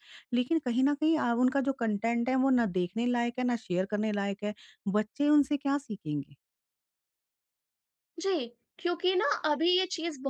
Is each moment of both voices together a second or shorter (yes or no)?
yes